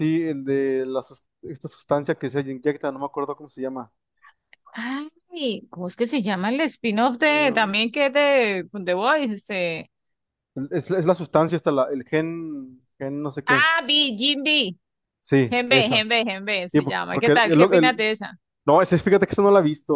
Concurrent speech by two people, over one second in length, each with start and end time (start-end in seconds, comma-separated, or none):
16.7-18.0